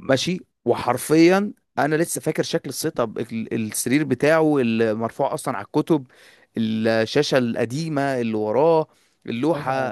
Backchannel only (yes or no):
no